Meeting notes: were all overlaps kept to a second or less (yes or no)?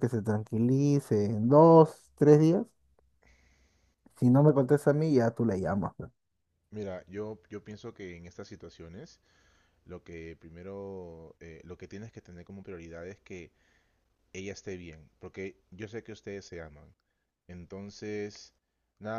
yes